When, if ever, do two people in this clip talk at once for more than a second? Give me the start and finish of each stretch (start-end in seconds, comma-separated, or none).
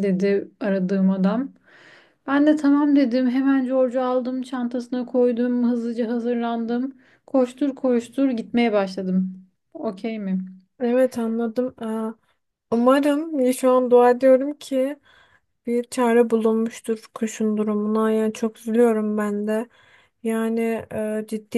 none